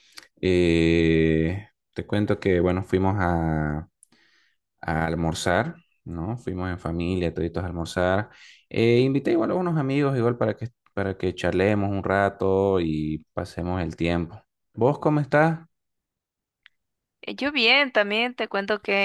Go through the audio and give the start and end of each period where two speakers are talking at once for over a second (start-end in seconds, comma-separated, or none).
none